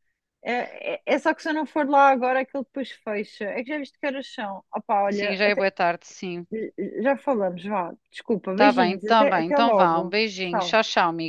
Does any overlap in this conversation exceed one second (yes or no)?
yes